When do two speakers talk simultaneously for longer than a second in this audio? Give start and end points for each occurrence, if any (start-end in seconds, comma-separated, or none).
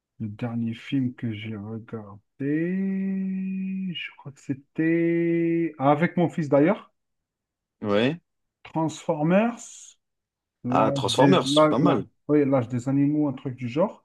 10.7-12.0